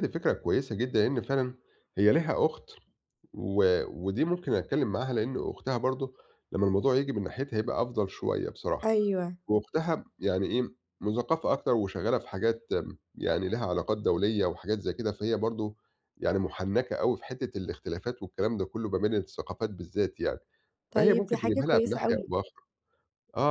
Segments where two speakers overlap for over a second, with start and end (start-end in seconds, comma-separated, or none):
20.9-22.3